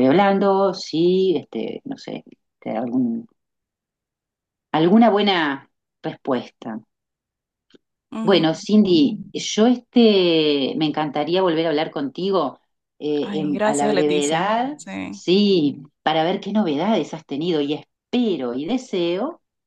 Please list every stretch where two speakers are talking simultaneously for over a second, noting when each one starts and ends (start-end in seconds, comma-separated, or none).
13.2-15.2